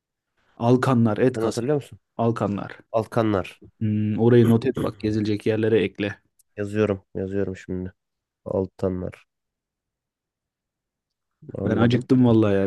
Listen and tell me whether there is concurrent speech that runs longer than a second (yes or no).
no